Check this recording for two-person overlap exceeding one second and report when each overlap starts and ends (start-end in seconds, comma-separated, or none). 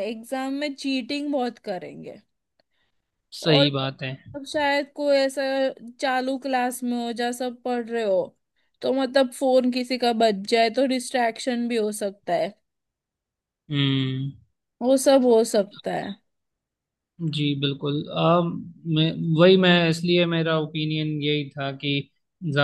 none